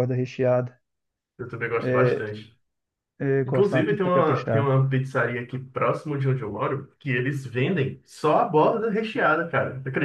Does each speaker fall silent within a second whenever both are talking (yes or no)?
no